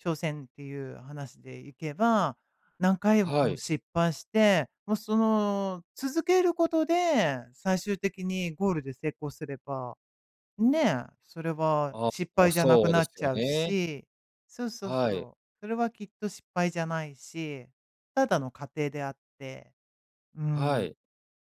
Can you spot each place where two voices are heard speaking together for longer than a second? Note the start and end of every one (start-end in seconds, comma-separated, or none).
11.9-13.8